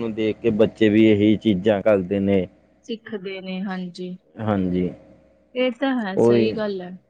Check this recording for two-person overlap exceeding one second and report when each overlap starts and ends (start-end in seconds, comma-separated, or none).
none